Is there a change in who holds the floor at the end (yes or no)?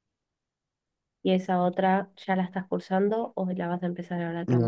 yes